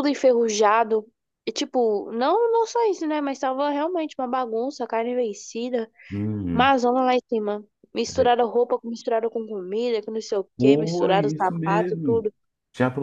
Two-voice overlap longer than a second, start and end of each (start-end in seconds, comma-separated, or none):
10.6-12.2